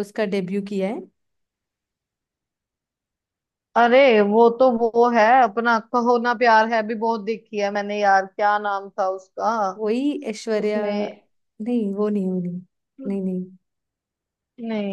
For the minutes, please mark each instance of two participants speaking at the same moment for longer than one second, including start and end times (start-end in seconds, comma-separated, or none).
none